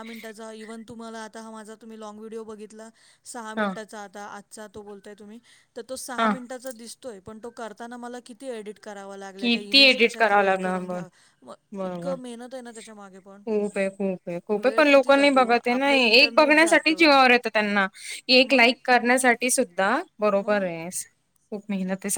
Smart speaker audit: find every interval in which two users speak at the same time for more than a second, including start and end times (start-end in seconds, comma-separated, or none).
9.4-11.0, 14.6-16.9